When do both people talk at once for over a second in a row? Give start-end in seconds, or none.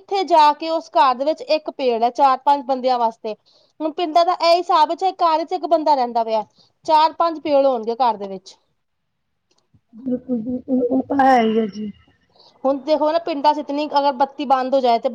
none